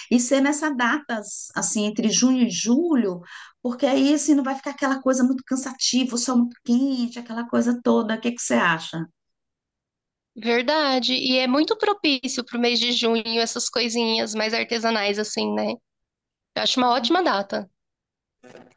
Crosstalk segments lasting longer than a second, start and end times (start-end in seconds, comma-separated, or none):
none